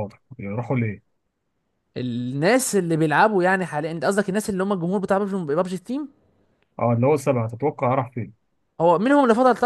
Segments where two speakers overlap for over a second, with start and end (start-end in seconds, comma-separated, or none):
none